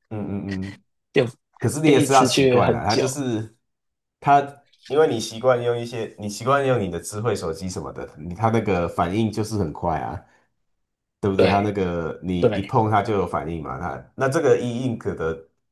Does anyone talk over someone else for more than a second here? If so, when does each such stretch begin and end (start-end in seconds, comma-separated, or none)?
1.8-3.2